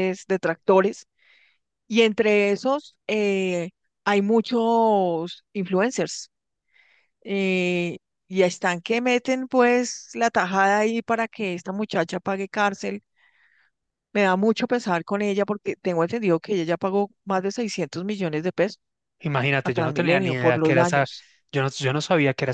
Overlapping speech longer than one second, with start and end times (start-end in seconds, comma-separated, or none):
19.6-21.1